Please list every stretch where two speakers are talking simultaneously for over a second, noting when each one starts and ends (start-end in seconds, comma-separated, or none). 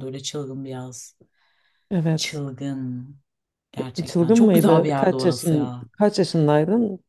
4.1-5.9